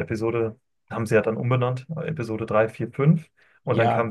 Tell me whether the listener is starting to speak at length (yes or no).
no